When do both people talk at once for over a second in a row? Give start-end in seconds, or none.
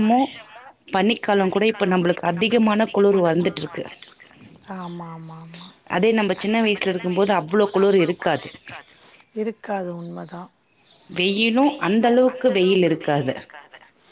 none